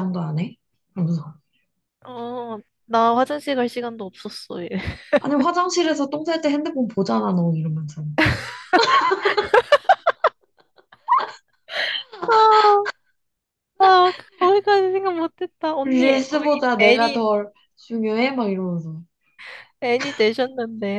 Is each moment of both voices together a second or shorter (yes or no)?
no